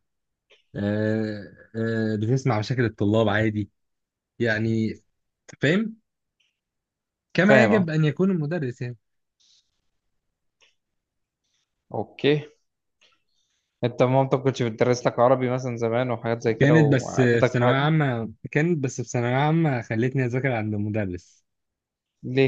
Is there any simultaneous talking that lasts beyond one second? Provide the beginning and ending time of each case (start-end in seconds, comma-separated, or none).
16.6-17.9